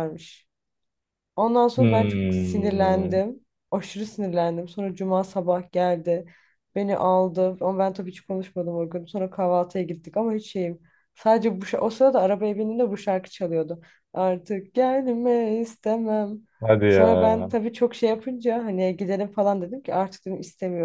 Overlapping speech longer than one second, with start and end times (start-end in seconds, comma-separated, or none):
1.8-3.2